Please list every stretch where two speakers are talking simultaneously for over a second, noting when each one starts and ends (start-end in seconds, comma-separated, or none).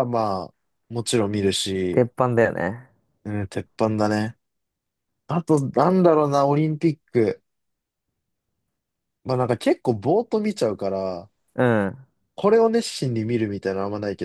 none